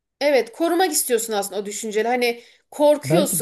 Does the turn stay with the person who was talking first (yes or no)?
yes